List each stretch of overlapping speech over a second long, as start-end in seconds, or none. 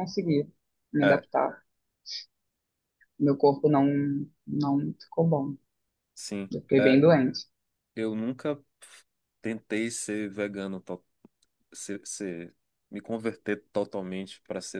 none